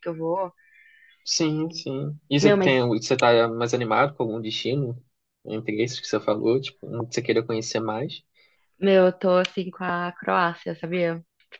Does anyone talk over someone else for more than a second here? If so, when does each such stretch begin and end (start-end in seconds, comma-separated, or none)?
none